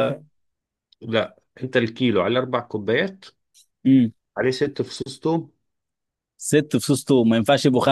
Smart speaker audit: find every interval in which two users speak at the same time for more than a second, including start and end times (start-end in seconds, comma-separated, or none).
none